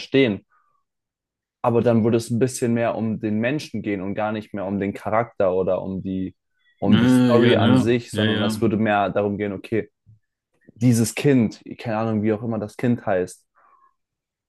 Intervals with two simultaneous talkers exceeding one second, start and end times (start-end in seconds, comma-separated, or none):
6.9-8.7